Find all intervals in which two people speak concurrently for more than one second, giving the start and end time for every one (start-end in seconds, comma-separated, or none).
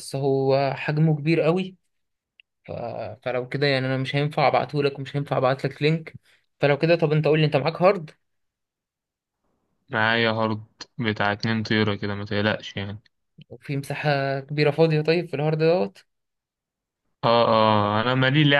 none